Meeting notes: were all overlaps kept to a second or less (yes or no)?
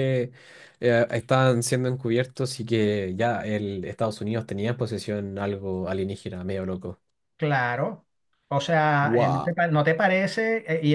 yes